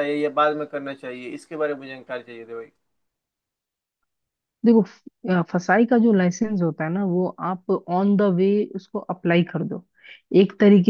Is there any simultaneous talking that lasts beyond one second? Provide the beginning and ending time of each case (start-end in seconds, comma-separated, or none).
none